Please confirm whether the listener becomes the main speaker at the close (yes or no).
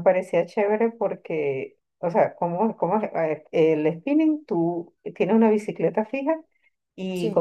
no